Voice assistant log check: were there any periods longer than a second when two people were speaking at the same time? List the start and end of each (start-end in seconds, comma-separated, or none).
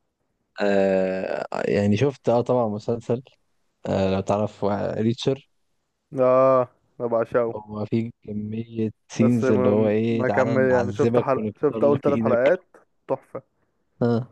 9.1-12.4